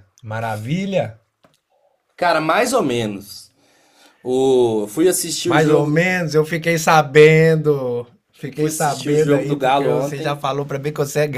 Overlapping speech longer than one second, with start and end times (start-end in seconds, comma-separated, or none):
8.5-10.4